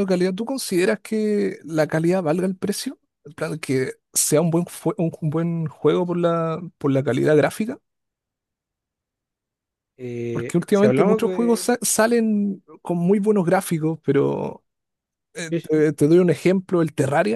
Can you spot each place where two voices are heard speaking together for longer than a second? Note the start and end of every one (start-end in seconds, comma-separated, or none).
10.3-11.7